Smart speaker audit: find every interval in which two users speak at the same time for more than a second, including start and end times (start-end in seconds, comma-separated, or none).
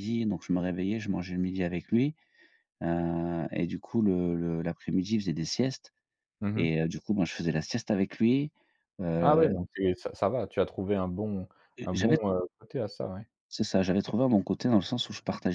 none